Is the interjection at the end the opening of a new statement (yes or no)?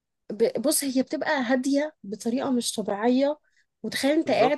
no